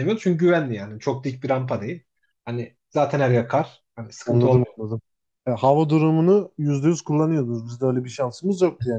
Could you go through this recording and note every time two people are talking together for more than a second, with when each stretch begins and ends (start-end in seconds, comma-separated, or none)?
none